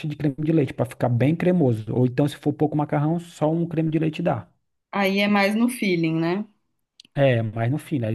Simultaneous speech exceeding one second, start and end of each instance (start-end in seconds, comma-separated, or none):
none